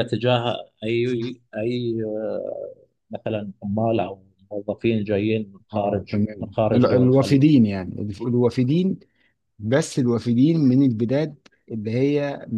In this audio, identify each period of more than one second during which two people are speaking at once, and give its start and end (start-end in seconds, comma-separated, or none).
5.7-7.4